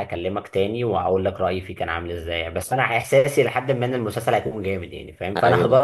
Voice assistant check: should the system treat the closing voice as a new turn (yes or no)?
no